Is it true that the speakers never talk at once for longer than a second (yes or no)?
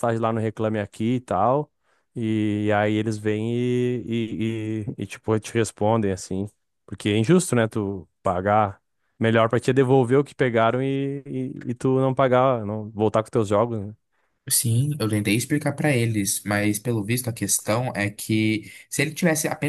yes